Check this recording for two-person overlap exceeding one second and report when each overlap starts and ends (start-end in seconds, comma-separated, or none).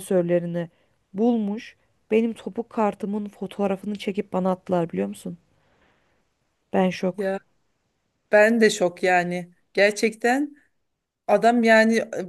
none